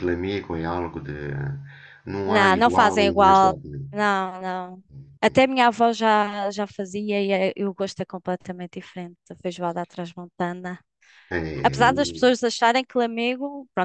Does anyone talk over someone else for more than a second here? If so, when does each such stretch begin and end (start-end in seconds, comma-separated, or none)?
2.3-3.5